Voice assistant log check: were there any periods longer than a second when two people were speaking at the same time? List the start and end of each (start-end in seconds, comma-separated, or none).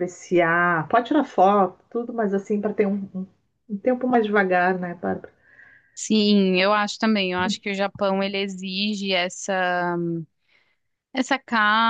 none